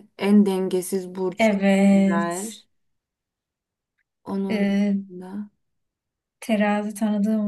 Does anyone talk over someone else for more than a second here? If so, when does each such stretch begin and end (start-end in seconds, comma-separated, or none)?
1.4-2.6